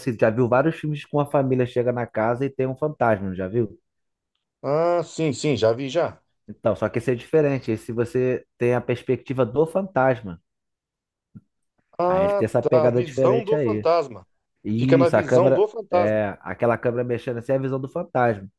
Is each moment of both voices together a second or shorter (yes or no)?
no